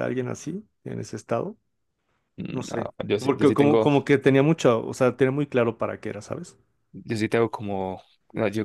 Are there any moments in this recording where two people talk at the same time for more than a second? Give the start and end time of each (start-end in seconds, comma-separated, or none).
2.5-3.9